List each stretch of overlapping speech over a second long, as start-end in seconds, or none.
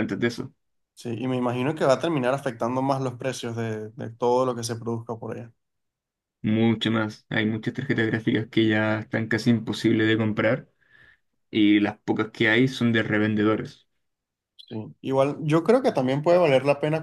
none